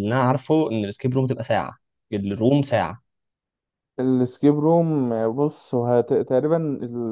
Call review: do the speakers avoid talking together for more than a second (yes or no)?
yes